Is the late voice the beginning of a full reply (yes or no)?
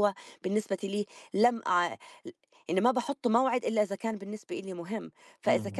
no